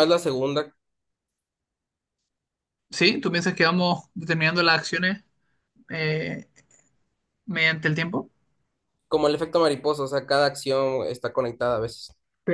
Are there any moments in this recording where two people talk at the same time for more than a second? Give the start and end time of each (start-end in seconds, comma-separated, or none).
none